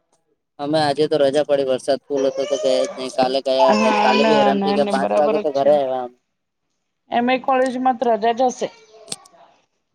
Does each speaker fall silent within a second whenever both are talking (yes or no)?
no